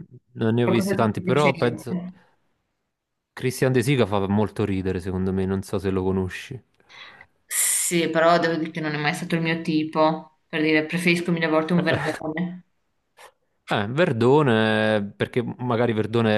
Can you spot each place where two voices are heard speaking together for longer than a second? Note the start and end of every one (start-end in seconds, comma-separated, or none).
0.6-1.9